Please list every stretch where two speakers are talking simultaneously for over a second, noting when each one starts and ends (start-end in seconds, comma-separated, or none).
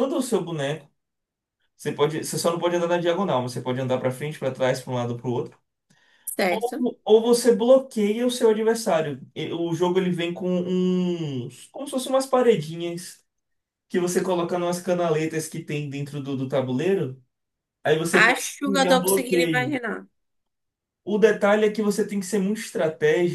18.1-19.8